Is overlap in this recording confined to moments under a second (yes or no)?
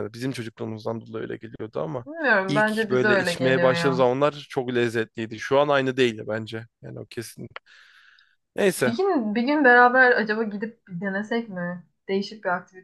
no